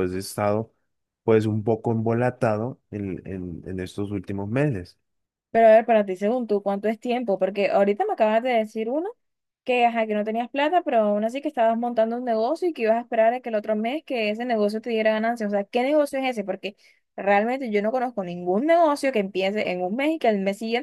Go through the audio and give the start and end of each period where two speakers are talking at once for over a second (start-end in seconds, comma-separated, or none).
none